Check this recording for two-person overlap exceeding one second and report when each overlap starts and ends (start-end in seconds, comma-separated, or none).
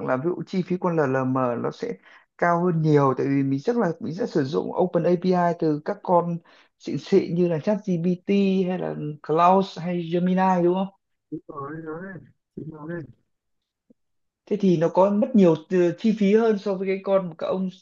none